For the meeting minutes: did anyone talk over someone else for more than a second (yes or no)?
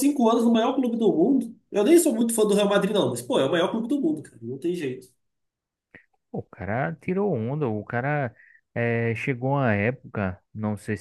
no